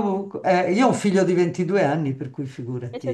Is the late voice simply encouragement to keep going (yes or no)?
no